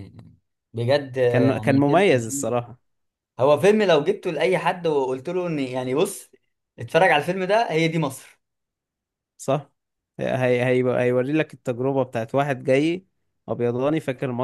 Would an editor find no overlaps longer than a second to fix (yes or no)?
no